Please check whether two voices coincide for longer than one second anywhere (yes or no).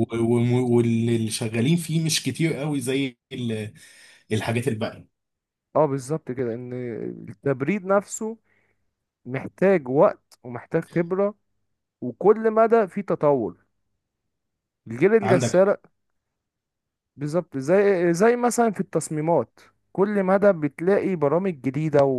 no